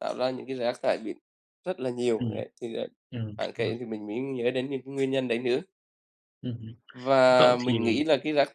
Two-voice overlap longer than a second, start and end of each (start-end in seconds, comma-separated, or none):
none